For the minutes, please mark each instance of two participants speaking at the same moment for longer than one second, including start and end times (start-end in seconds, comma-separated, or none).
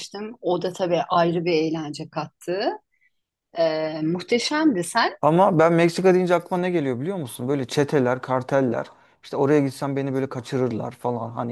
none